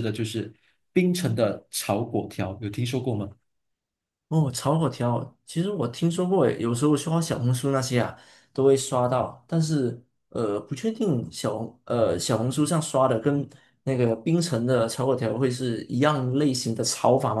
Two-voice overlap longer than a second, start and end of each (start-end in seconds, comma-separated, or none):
none